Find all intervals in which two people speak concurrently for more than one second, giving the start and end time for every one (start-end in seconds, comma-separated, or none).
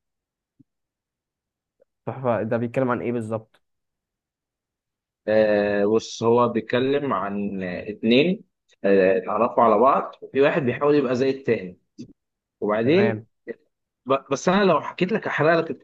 none